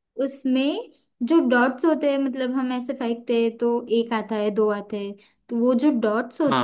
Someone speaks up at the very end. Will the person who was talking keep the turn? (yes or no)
yes